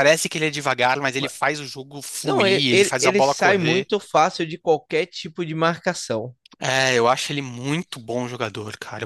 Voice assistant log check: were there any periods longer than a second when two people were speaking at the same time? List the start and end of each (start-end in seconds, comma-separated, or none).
2.2-3.9